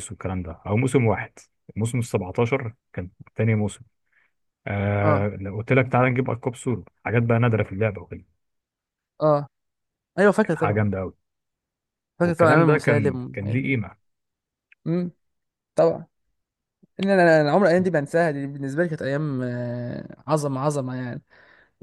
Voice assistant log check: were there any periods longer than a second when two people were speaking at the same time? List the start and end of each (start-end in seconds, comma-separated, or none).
12.2-13.7